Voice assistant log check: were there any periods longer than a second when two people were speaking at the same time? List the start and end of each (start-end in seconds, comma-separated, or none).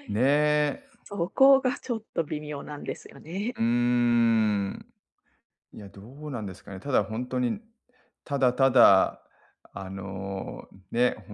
none